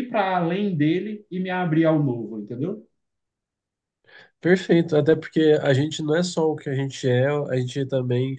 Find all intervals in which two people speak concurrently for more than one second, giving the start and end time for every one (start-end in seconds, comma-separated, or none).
none